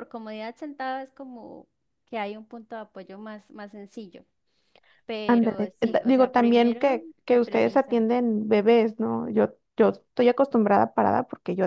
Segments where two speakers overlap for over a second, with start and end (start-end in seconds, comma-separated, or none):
5.3-8.0